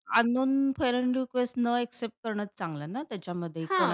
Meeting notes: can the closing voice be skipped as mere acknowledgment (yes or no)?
no